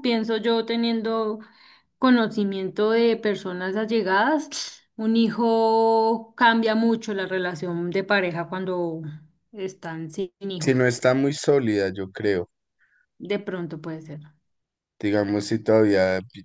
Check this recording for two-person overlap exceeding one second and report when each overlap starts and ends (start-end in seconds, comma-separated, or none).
none